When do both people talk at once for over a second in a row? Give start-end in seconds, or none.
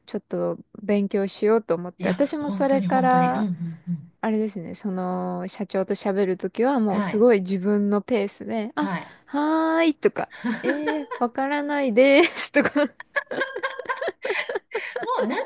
2.0-3.5